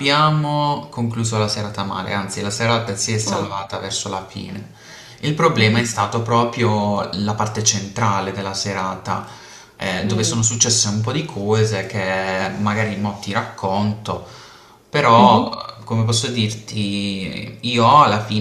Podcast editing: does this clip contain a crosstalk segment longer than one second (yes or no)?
no